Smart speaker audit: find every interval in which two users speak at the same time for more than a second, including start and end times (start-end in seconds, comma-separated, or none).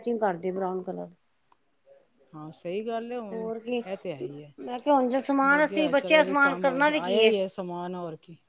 5.5-7.3